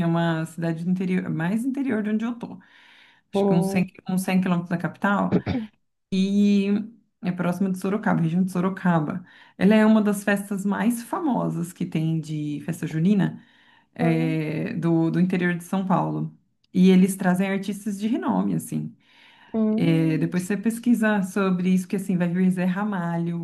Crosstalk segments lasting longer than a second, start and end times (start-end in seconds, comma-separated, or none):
none